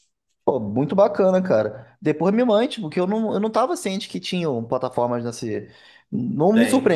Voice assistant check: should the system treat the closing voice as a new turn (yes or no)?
no